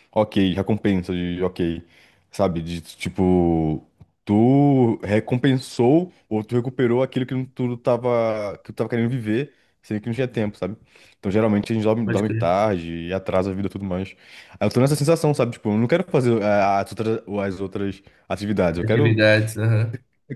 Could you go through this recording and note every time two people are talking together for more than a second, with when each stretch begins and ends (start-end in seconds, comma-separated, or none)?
none